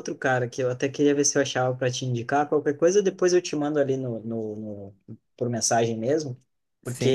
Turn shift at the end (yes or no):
no